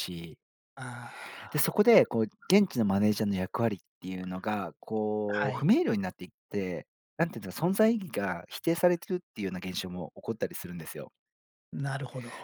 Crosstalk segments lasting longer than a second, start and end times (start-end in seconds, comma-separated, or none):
none